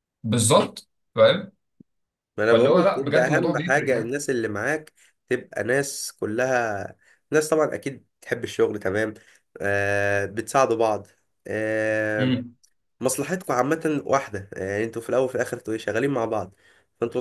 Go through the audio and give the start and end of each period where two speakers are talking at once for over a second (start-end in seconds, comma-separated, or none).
2.5-4.2